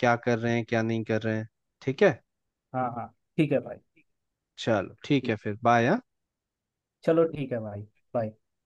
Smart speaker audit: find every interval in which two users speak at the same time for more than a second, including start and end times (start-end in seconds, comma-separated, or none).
none